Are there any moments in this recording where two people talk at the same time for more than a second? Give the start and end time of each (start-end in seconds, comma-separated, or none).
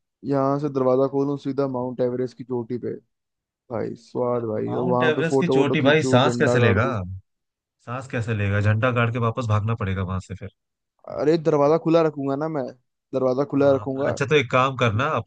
4.7-6.9